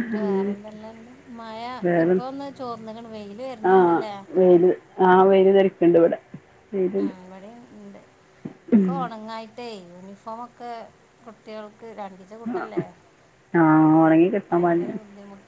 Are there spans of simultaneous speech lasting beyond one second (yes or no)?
no